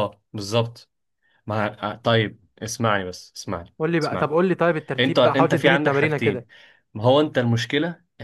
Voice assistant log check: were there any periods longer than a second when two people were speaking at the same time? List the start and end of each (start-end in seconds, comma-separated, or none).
5.0-6.5